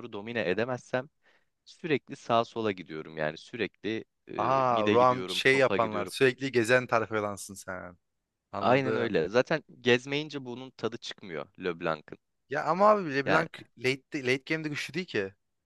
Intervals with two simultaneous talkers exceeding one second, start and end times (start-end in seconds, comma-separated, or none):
4.4-6.1